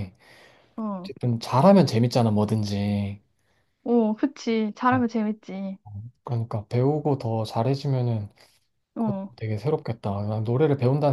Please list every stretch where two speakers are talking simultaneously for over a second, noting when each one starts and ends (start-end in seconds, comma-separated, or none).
none